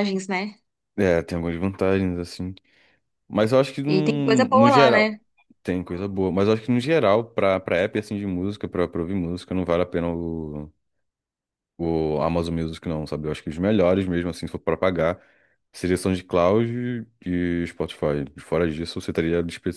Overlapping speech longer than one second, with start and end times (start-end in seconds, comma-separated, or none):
3.9-5.1